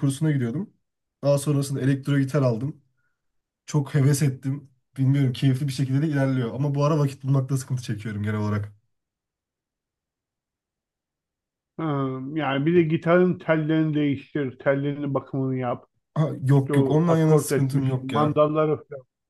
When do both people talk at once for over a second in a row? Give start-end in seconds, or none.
16.5-18.4